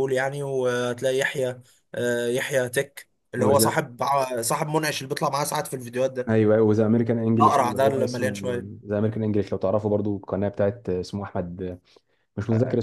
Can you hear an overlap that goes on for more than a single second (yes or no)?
yes